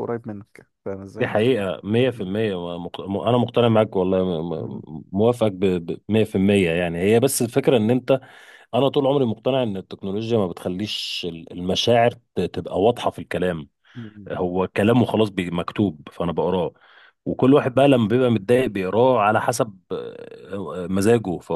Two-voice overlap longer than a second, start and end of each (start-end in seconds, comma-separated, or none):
none